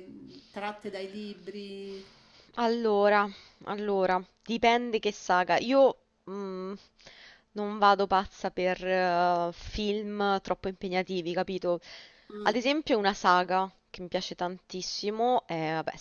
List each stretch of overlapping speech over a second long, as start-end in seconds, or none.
none